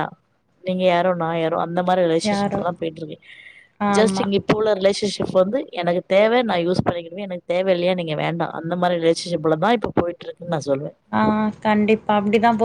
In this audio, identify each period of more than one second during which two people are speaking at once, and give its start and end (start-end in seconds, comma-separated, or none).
none